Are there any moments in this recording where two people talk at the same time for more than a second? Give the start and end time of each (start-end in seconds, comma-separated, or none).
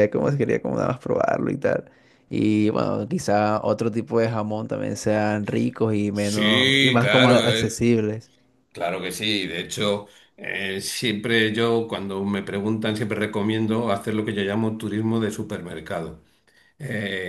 6.1-7.9